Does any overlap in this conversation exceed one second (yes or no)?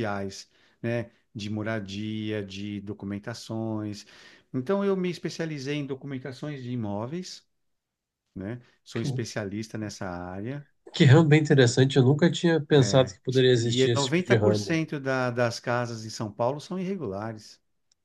yes